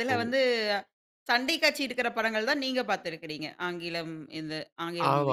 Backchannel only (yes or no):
no